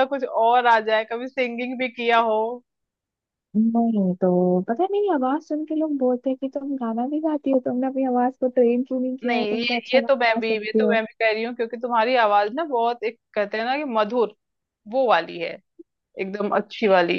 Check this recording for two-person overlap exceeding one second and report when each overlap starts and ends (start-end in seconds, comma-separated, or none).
9.2-11.0